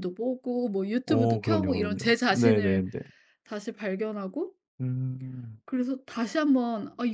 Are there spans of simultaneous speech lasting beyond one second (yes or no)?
yes